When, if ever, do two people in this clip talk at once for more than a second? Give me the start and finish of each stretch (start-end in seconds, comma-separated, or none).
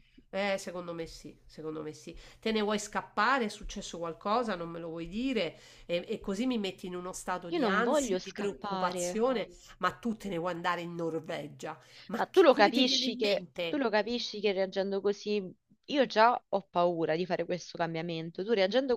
7.5-9.2, 12.2-13.8